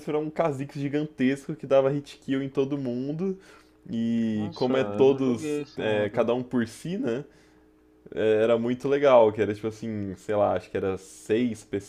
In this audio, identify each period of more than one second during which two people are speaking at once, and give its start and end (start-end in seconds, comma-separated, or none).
4.3-6.3